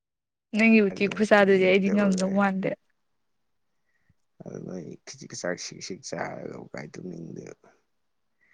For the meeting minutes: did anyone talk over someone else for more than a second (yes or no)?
yes